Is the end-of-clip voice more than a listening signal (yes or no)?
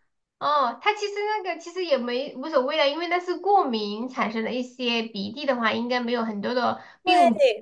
yes